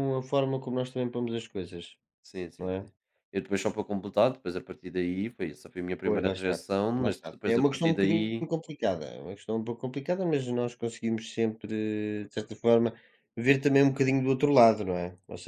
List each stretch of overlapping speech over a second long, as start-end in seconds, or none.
6.0-8.5